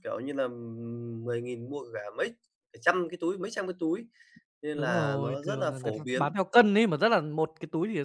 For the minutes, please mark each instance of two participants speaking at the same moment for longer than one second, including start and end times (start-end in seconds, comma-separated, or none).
4.7-6.3